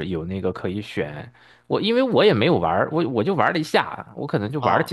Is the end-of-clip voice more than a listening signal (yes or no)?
no